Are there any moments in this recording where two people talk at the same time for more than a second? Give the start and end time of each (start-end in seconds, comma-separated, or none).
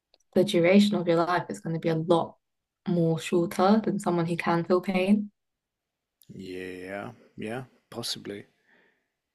none